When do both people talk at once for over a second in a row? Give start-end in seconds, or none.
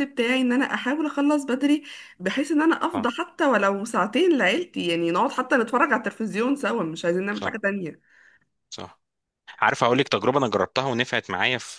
none